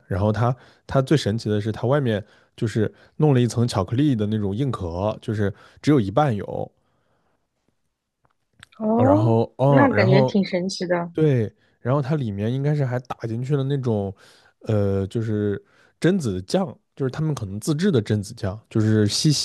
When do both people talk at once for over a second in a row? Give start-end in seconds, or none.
8.9-10.4